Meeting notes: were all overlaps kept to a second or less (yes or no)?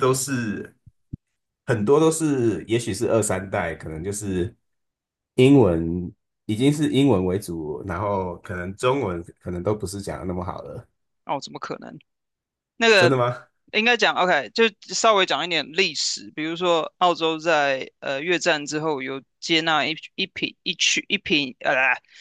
yes